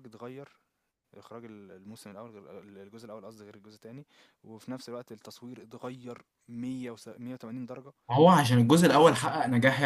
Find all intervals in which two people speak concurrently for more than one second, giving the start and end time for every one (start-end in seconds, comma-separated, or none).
none